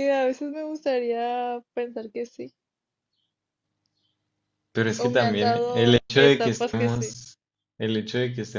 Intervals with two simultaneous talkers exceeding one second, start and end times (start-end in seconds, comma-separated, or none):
5.0-7.2